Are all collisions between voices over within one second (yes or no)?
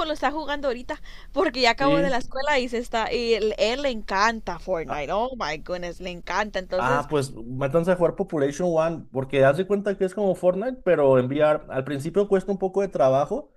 yes